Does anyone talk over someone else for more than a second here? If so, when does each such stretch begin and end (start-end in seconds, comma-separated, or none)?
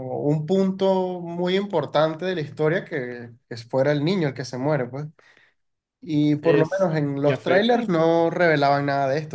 6.4-7.9